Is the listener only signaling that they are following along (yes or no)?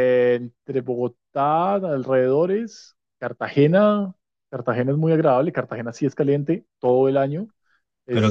no